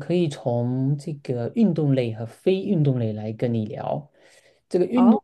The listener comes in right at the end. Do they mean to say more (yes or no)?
no